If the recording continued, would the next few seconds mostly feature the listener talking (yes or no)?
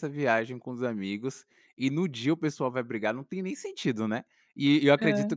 no